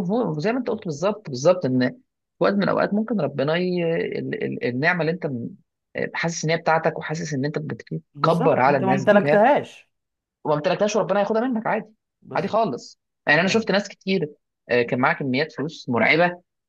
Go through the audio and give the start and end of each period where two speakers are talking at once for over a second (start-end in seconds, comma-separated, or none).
8.2-9.4